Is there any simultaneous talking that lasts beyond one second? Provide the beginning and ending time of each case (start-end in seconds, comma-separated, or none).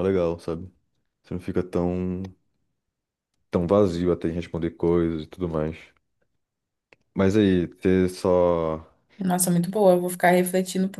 none